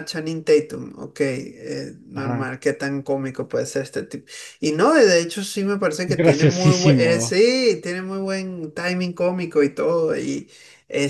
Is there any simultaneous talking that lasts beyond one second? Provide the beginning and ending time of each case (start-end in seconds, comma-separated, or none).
6.0-7.3